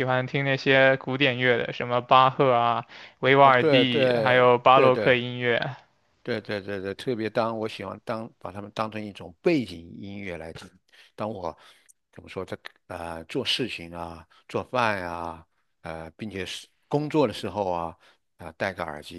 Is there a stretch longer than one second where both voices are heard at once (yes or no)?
yes